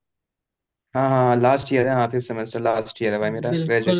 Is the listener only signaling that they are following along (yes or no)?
no